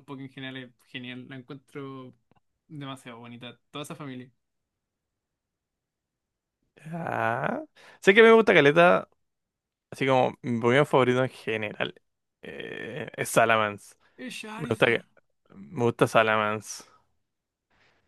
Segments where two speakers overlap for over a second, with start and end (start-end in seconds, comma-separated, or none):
none